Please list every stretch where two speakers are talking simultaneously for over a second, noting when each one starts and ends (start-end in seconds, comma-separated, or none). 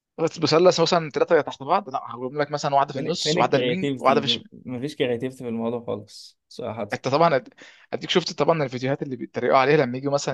2.9-4.2